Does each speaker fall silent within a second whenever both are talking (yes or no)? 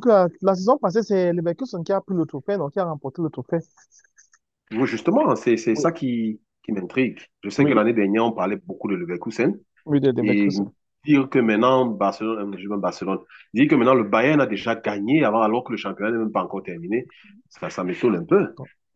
yes